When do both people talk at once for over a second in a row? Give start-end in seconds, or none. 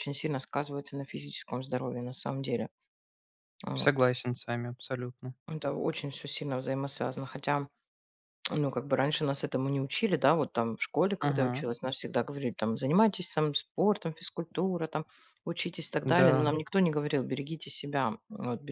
none